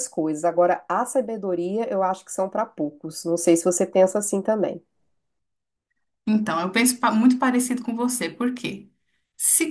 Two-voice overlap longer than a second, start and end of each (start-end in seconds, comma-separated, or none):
none